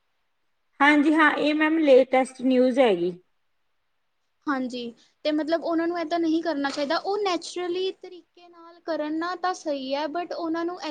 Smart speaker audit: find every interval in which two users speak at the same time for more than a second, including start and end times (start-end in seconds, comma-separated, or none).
none